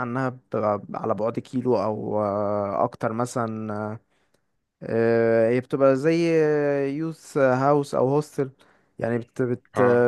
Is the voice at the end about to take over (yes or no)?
no